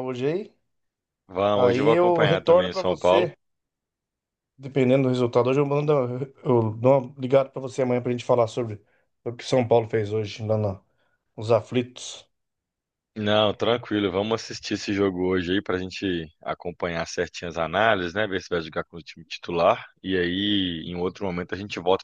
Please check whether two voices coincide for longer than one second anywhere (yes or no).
yes